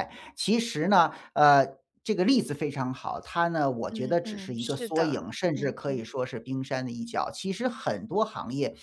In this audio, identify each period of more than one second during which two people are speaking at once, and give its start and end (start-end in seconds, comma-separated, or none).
3.9-6.1